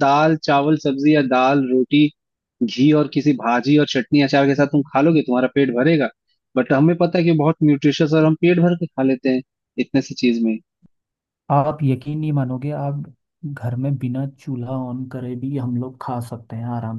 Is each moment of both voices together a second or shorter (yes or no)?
yes